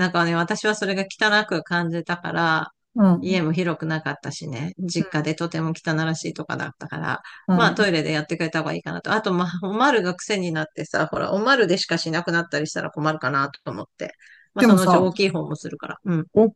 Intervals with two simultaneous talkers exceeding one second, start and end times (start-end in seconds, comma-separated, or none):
none